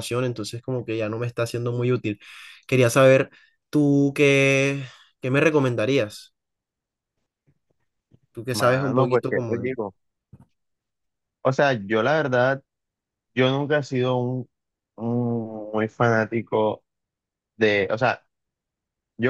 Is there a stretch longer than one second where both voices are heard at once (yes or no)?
yes